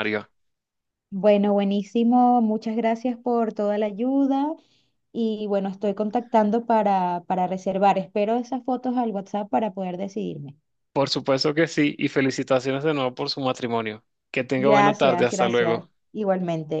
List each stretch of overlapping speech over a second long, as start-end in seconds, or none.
14.6-15.9